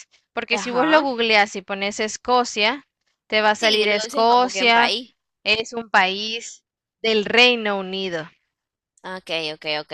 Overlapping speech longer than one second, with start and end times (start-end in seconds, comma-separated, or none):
3.5-4.9